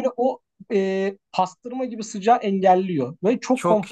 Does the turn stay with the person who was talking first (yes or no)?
no